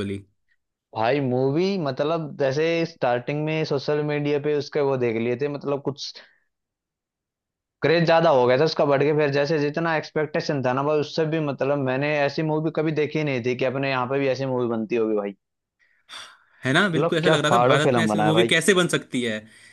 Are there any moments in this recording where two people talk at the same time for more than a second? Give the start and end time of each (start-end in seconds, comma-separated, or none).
17.0-18.6